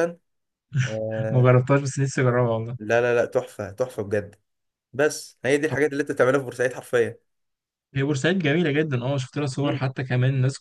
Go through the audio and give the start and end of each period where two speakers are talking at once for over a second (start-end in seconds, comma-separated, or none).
none